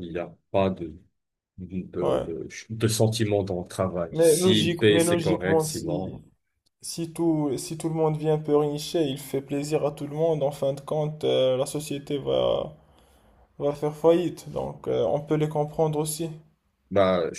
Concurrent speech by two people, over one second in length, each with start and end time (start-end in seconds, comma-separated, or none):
4.1-6.1